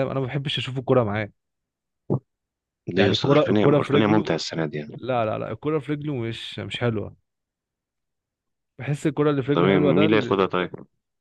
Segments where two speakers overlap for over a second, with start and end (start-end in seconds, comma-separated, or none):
3.0-4.4